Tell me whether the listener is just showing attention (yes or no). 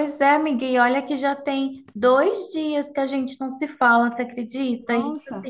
yes